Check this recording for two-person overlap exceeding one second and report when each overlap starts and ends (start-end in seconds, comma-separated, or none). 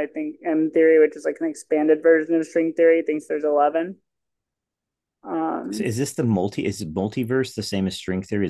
none